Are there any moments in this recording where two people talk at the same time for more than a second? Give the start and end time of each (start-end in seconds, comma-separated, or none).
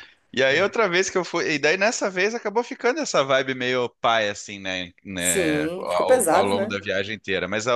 5.2-6.8